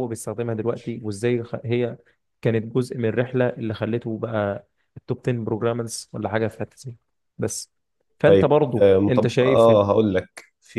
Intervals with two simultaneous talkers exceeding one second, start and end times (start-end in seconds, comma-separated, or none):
8.2-9.7